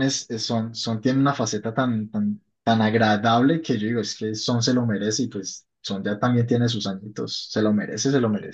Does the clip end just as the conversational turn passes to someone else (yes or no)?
yes